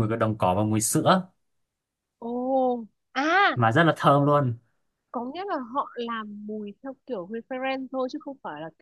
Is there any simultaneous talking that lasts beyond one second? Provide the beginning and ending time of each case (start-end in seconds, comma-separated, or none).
none